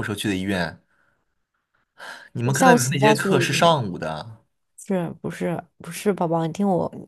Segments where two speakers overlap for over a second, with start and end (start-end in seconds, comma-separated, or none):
2.4-3.8